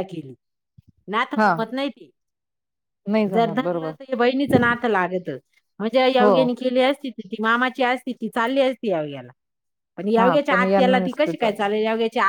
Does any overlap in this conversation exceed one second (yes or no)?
yes